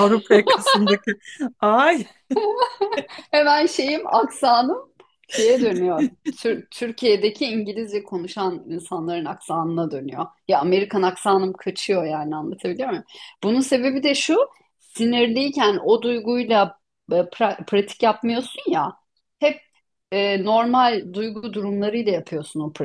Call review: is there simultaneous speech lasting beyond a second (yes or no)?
no